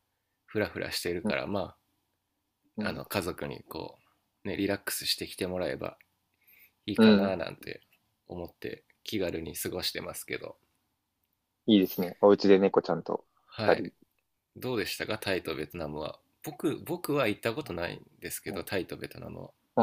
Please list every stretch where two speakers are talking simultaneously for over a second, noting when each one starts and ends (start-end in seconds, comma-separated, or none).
none